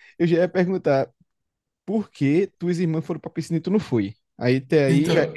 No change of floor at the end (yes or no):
yes